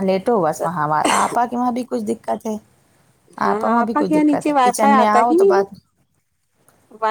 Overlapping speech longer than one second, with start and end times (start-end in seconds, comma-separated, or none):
3.7-5.5